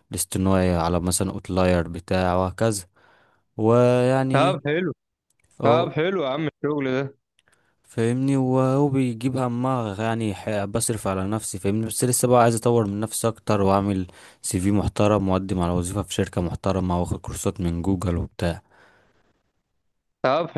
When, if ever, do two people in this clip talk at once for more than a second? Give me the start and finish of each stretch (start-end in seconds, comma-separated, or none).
none